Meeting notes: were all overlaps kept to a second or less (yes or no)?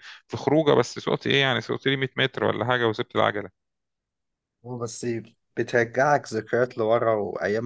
yes